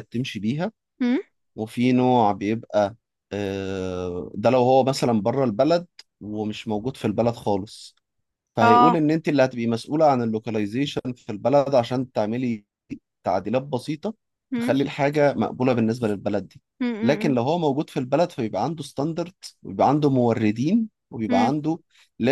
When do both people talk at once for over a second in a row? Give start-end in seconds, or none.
none